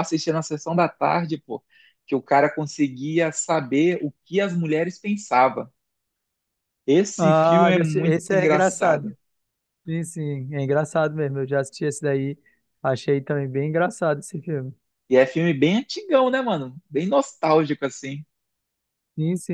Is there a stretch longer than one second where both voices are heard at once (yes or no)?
yes